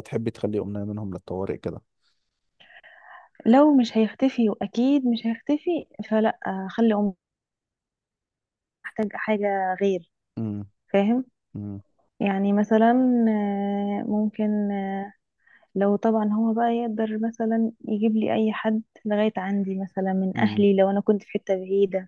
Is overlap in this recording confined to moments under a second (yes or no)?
yes